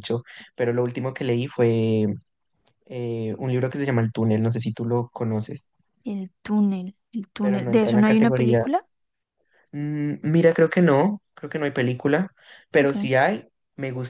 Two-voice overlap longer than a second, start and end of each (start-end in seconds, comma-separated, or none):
7.4-8.7